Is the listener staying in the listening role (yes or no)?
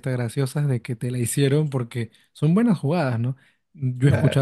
yes